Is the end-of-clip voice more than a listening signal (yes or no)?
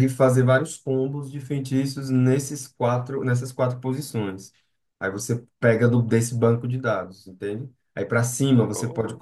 no